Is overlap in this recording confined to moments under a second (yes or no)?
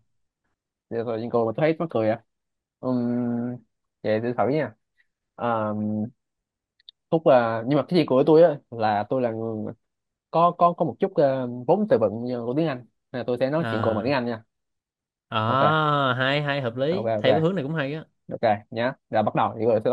yes